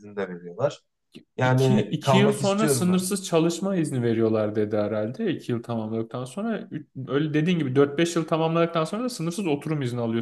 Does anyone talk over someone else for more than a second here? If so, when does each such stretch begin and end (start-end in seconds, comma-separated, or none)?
1.4-3.0